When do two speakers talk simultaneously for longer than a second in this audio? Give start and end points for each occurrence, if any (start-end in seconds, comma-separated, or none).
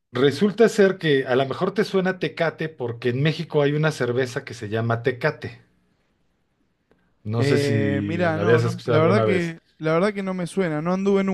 7.4-9.6